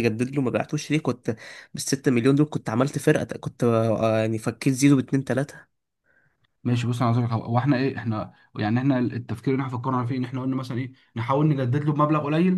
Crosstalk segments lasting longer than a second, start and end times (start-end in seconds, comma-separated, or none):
none